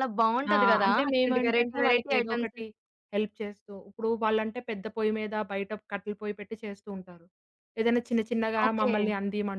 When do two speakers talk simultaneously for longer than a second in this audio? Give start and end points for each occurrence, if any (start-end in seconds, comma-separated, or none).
0.5-2.6